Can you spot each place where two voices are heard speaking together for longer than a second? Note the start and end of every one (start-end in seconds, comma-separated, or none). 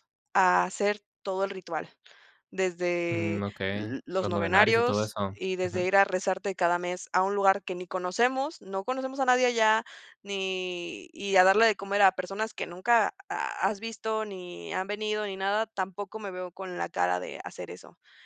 3.1-5.9